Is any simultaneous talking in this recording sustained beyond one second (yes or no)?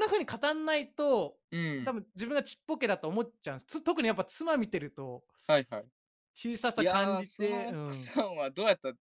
yes